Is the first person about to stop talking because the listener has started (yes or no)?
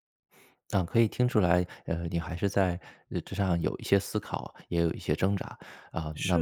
no